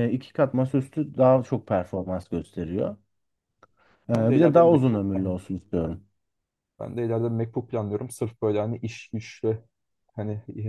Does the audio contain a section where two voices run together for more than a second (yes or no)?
yes